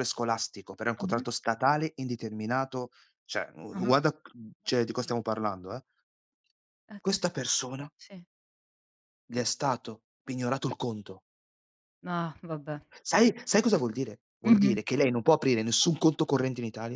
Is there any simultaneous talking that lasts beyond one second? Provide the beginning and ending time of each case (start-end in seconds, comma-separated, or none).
none